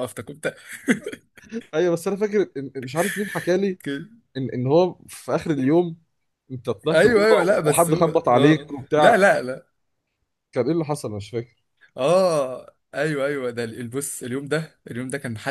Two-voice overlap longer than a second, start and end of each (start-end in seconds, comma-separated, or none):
6.9-9.2